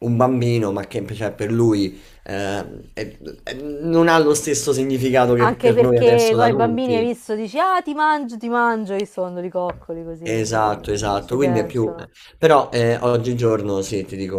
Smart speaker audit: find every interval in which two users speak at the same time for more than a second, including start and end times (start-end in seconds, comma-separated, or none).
5.4-7.1, 10.2-11.9